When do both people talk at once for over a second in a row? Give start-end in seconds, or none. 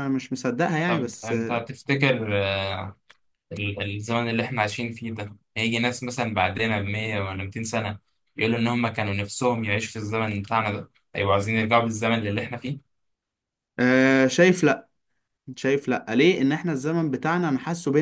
none